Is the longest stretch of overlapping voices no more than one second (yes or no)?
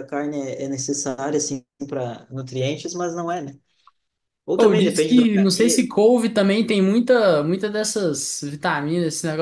no